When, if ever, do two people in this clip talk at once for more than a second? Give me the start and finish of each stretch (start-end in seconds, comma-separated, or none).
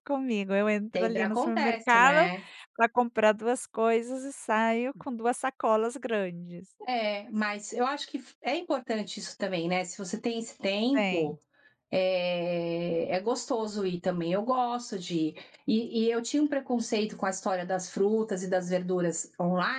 0.9-2.3